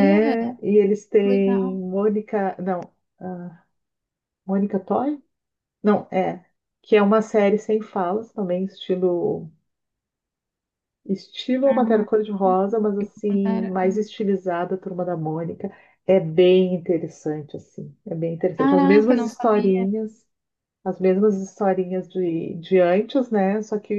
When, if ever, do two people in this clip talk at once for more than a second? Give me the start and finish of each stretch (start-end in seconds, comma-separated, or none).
18.6-19.9